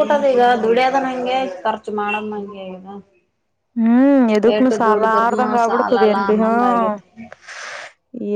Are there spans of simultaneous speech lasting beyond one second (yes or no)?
yes